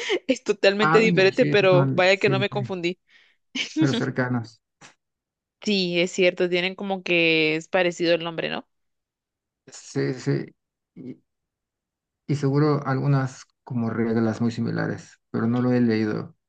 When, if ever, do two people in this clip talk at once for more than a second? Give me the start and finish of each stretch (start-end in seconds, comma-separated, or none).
0.8-2.6